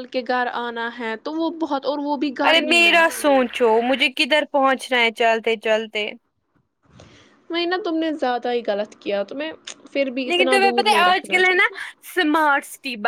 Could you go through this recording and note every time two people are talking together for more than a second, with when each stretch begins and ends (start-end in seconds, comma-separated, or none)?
none